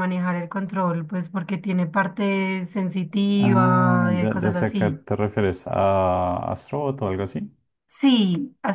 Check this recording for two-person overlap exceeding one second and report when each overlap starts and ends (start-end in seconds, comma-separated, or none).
3.4-5.0